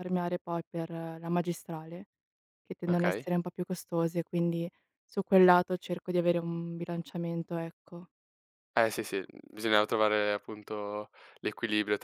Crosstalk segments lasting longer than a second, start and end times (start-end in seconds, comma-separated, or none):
none